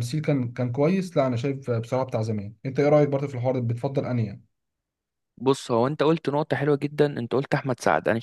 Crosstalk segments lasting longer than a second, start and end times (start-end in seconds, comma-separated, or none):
none